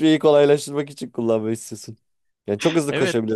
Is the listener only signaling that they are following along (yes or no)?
yes